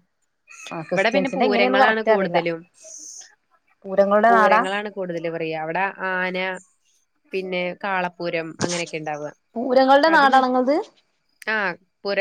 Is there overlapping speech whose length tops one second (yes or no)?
yes